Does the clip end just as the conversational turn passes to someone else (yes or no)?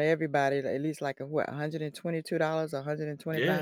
yes